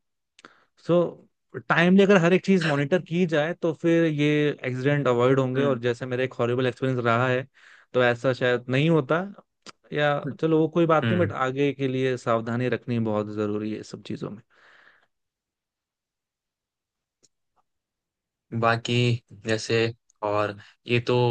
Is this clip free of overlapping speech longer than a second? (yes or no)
yes